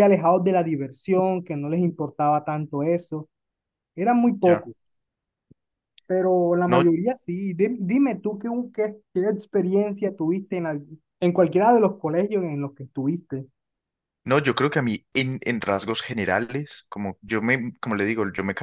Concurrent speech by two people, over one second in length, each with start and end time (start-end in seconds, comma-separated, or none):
none